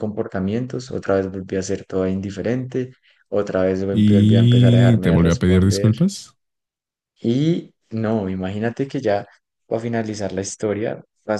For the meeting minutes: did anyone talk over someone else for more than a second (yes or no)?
yes